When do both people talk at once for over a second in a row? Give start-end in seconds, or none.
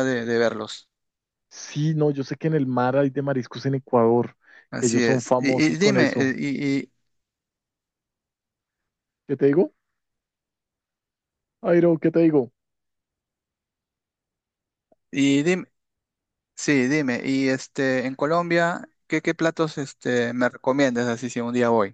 4.8-6.4